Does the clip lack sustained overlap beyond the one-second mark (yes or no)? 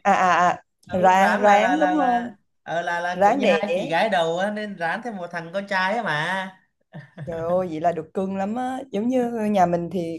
no